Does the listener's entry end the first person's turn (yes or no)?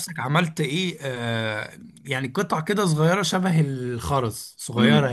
yes